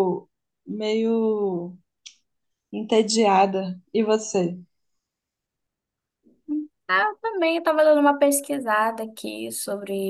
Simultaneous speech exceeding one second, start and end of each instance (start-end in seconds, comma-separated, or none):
none